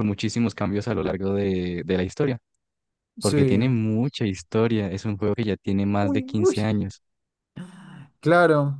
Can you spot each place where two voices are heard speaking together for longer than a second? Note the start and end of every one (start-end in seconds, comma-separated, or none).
none